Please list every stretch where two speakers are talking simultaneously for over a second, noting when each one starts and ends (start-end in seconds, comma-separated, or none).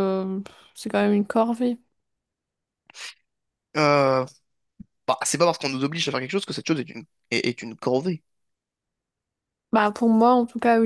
none